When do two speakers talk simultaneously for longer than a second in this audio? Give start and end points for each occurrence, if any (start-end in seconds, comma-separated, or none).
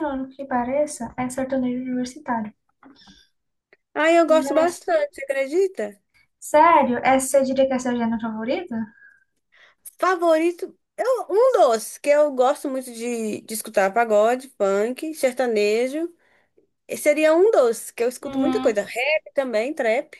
none